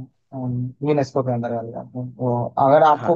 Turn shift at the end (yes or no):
no